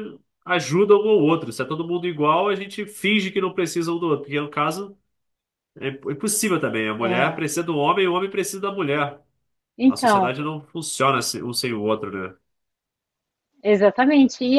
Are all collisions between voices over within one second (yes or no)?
yes